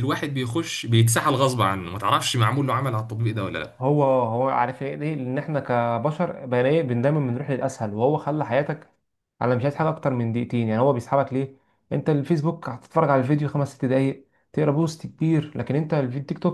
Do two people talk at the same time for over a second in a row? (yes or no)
no